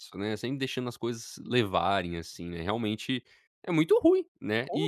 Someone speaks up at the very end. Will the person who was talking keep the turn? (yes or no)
no